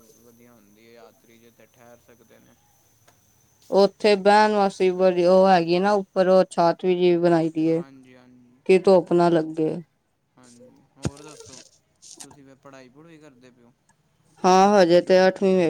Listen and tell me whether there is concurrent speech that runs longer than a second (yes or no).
no